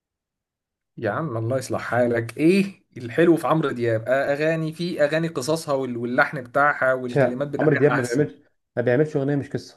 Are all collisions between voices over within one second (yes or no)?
no